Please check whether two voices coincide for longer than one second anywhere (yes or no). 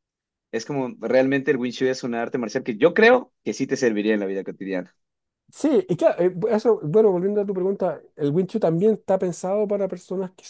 no